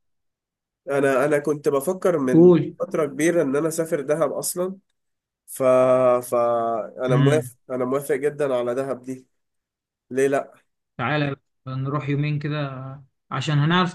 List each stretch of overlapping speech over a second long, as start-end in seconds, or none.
none